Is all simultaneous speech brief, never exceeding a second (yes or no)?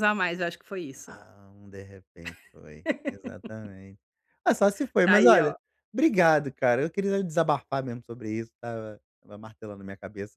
yes